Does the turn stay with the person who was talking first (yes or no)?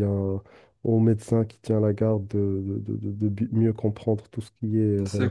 no